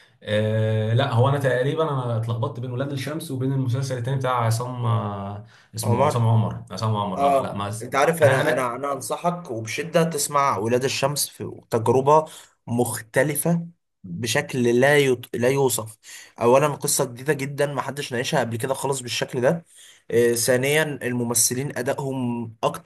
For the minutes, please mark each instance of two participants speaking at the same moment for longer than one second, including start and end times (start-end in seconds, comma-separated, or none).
7.2-8.8